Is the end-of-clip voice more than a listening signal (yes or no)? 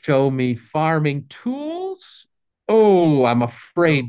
no